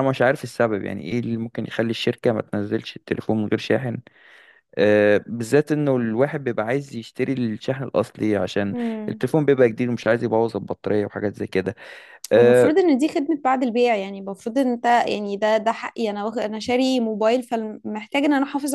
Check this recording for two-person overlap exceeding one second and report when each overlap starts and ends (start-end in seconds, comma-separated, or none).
none